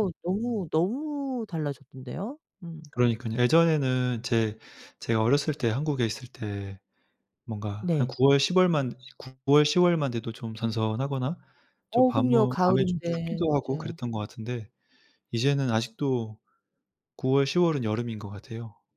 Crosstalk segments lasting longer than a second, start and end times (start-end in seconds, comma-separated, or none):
11.9-14.0